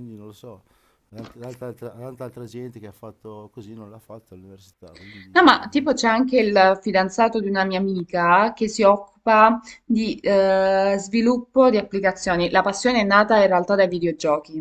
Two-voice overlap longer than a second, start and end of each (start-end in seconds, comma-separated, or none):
none